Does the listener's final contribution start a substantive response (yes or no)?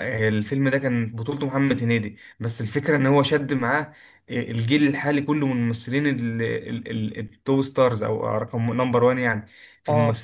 no